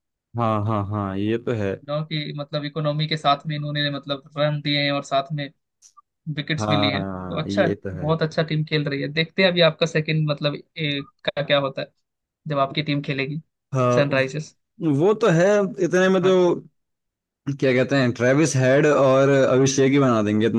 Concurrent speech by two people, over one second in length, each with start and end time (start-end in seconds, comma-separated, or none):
6.6-8.1